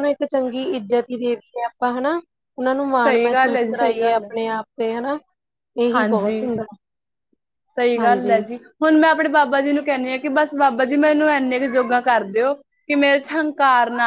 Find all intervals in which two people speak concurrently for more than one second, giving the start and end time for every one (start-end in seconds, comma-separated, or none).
3.0-4.3